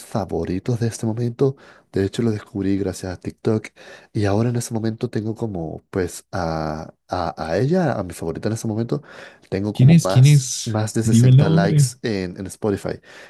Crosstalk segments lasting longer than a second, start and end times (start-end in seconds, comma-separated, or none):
9.7-11.9